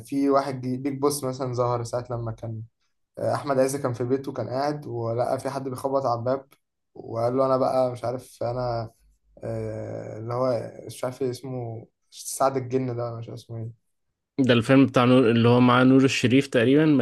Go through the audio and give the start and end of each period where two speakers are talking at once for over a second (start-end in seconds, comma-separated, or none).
none